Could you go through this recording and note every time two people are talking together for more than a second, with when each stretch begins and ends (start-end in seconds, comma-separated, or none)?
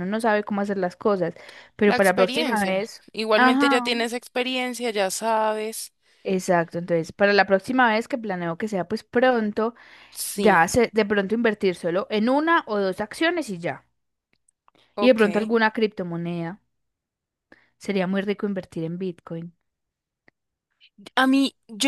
1.8-3.9